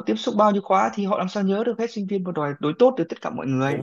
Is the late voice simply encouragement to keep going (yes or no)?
no